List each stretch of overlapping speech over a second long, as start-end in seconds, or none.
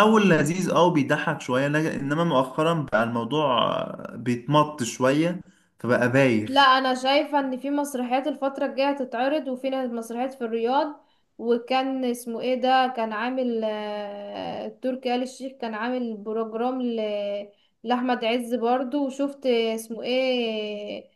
none